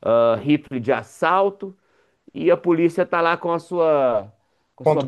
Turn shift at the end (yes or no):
no